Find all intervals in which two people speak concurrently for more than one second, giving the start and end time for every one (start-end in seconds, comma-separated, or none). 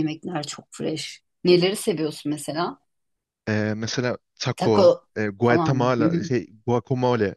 4.6-6.3